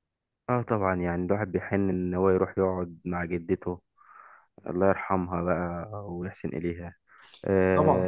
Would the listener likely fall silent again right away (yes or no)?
no